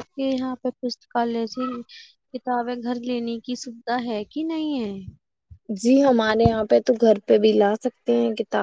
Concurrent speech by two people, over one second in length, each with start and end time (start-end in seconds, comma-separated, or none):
none